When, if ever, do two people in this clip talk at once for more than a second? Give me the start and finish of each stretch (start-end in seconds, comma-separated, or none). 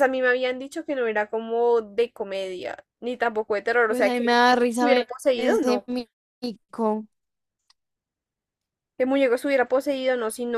3.9-5.8